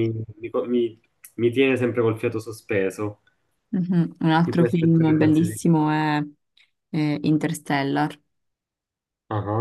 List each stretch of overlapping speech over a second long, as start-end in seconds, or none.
4.4-5.8